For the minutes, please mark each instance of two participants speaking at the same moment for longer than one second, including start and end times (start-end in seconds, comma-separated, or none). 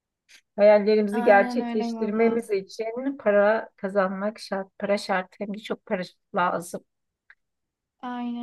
1.1-2.4